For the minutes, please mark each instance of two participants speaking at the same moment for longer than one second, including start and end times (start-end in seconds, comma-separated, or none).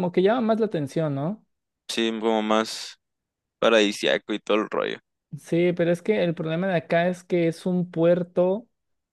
none